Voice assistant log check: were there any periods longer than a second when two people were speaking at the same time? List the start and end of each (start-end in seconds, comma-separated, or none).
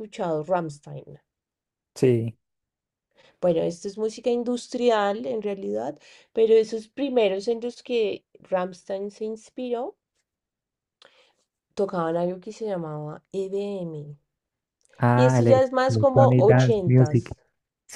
15.1-17.3